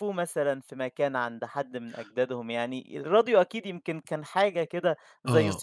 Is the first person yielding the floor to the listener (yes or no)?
yes